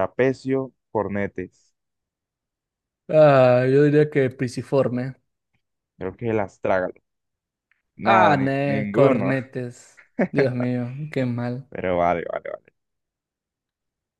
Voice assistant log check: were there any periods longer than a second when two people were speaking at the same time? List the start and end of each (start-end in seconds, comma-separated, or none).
8.0-9.3